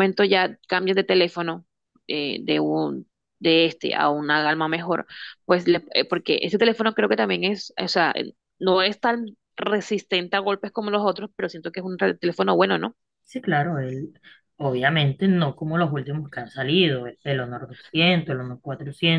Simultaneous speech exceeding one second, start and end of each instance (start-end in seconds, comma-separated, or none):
none